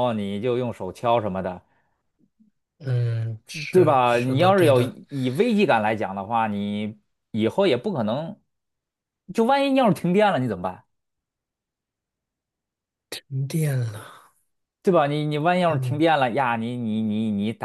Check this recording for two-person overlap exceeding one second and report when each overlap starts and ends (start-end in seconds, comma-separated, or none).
3.7-5.0